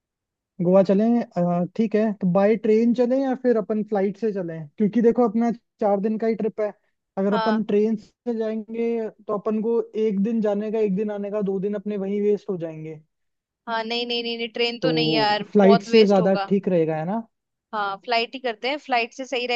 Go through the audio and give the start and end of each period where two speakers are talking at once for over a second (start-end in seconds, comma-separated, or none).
14.8-16.5